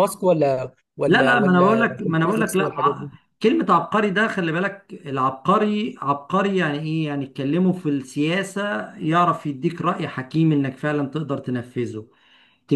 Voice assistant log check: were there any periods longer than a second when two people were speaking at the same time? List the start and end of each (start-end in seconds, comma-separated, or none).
1.1-3.1